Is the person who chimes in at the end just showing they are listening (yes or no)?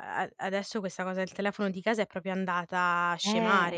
yes